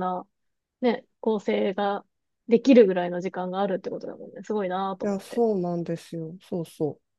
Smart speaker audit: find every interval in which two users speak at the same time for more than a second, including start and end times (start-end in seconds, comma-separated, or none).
none